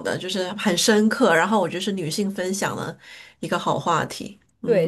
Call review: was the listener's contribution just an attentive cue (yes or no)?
no